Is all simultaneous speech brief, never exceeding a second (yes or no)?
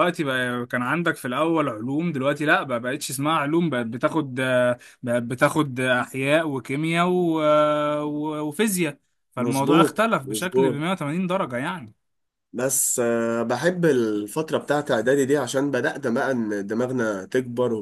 no